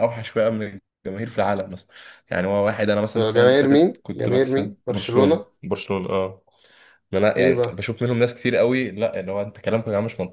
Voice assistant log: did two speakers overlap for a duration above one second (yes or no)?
yes